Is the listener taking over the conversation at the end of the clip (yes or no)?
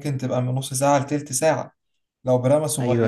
no